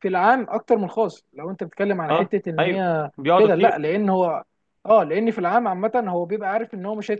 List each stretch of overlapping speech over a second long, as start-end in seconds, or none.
2.1-3.8